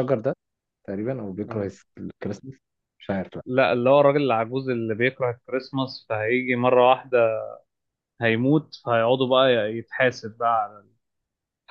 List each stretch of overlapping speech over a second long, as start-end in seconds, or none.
none